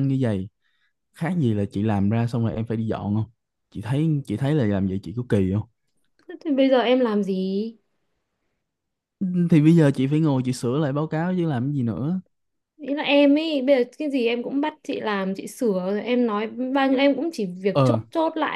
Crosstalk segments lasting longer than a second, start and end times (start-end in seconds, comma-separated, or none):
none